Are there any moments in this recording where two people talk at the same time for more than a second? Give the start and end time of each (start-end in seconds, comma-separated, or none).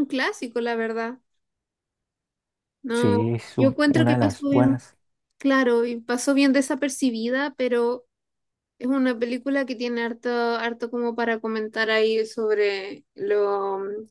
2.9-4.8